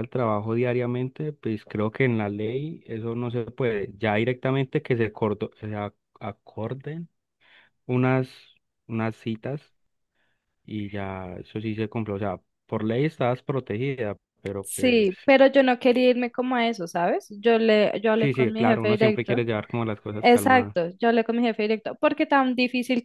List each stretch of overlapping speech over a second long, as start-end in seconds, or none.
18.2-19.4